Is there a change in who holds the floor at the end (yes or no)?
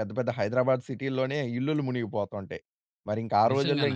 no